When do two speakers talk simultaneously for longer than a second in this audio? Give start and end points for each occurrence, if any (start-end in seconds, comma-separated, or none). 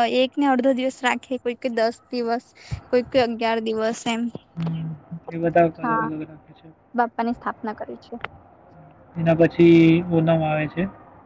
none